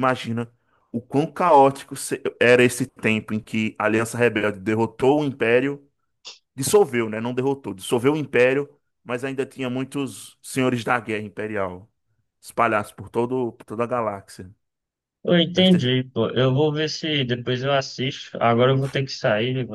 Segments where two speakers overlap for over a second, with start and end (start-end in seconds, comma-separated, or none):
none